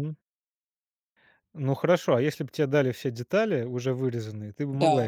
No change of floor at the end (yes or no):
no